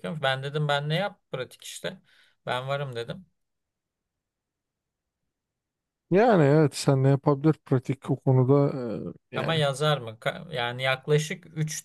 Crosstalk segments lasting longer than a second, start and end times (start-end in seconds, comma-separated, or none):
none